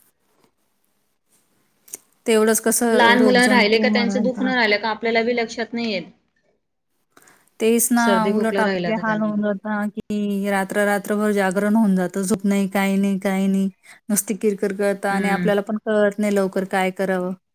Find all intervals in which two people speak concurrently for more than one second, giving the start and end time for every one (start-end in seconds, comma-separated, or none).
3.0-4.3